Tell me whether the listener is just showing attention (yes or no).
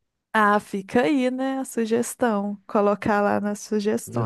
no